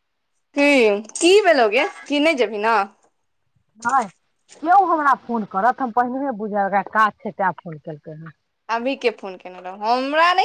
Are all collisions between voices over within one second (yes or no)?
yes